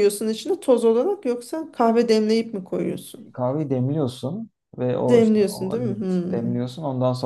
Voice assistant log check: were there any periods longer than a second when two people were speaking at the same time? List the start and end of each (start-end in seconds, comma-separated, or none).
5.1-6.6